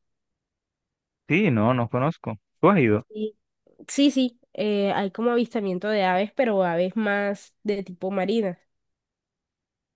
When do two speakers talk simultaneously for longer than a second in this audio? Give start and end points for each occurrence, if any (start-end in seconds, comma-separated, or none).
none